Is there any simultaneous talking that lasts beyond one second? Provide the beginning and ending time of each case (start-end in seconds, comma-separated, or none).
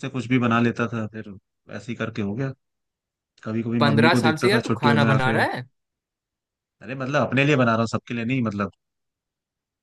3.8-5.4